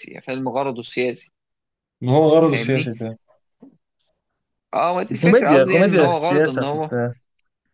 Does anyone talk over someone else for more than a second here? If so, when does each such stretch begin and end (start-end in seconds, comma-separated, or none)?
5.2-7.0